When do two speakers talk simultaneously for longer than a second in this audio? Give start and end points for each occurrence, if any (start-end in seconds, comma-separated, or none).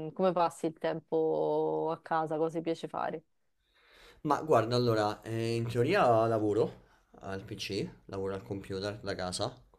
none